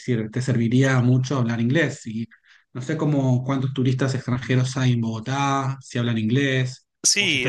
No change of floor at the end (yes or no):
no